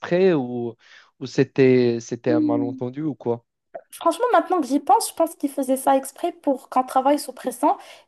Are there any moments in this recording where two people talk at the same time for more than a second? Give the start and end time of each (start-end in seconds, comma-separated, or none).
none